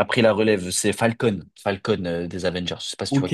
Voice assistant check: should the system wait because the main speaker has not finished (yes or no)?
no